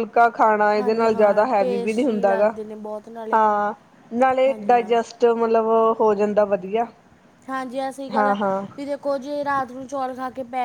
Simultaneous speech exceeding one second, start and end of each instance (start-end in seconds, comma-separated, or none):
0.8-2.5